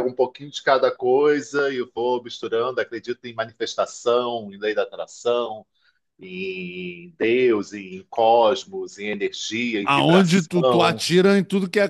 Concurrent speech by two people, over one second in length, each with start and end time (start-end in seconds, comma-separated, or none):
9.8-11.1